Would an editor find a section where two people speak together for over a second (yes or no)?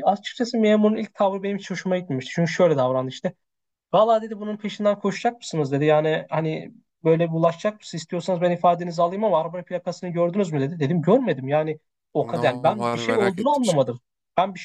yes